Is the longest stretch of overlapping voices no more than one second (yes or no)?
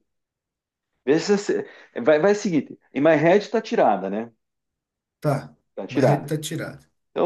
yes